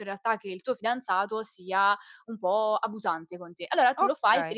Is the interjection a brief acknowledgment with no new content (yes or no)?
yes